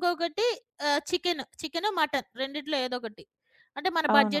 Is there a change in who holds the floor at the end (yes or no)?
no